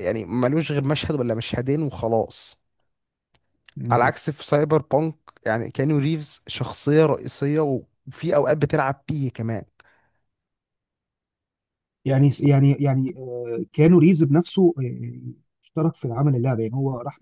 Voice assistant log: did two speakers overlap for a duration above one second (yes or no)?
no